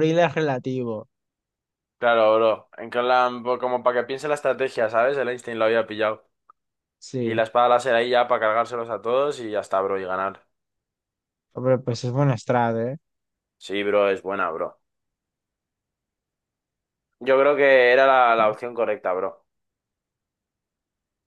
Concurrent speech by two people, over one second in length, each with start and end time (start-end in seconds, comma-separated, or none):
none